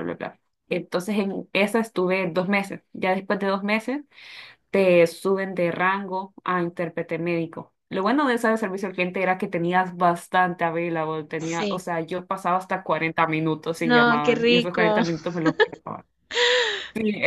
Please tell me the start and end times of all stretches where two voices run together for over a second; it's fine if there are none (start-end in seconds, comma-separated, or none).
13.8-15.0